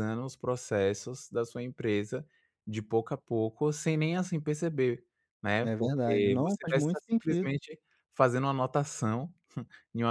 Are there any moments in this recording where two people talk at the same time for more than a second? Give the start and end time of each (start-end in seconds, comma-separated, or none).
5.6-7.6